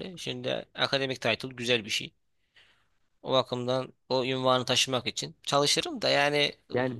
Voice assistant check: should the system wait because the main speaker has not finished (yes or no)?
no